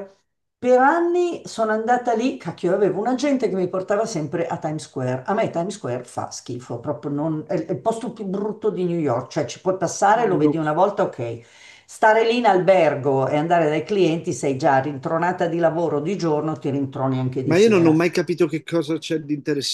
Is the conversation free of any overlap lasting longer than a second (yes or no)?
yes